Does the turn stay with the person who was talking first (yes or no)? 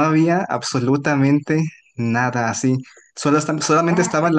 yes